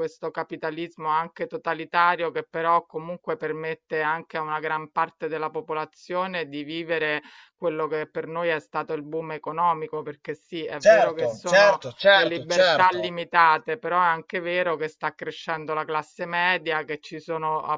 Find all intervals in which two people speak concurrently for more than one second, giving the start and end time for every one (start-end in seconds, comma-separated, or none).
10.8-13.1